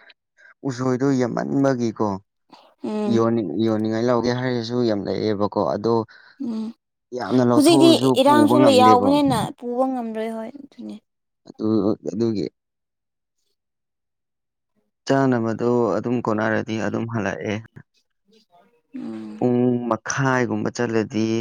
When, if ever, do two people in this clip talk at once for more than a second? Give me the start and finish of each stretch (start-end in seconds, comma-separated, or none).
7.5-9.1